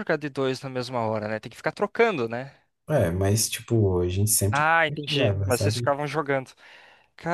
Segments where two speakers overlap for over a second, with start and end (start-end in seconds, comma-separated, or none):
4.5-6.0